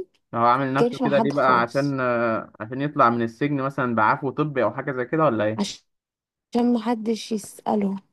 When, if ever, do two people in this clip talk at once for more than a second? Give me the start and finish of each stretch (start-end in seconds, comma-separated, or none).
0.7-2.0